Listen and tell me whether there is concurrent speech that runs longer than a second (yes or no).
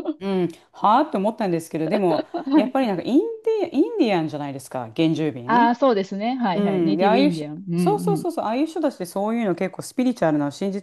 yes